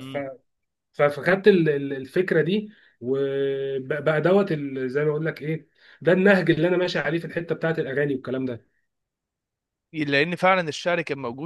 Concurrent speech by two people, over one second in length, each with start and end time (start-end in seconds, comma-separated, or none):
none